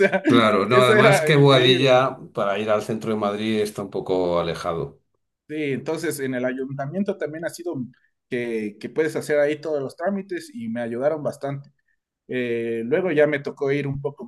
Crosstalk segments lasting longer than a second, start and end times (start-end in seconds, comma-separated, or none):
0.7-2.0